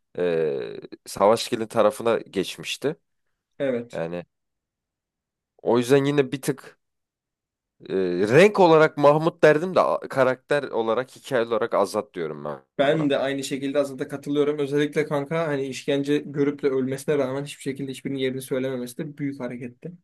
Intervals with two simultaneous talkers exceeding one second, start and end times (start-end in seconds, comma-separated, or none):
none